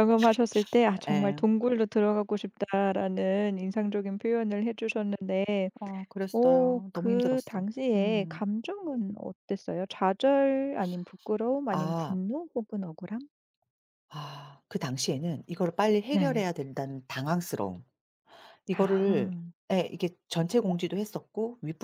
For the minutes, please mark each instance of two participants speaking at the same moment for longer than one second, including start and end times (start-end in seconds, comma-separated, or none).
6.3-8.4